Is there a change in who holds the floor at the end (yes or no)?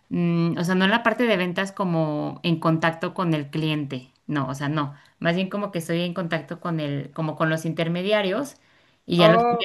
no